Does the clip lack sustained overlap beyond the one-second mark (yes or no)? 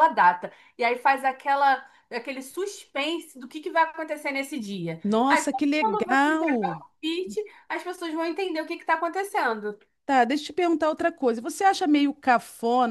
no